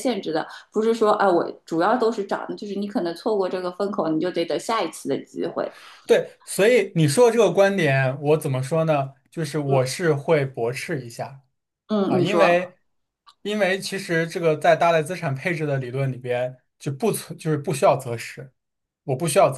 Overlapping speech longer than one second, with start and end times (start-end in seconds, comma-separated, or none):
none